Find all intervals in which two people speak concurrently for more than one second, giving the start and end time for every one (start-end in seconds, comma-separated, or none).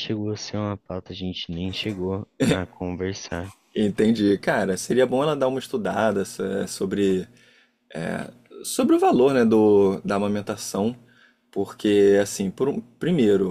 none